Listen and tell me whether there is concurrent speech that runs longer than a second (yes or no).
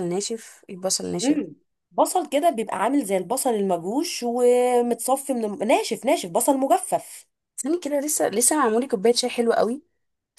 no